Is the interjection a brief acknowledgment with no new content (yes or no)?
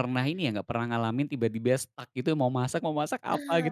no